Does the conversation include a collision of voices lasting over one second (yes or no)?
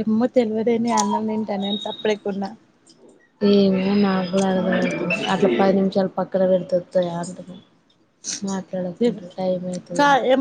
no